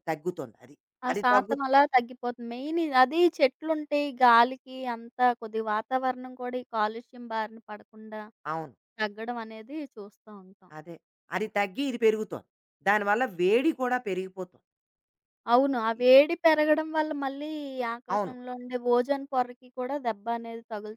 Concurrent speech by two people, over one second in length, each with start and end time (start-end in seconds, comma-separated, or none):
none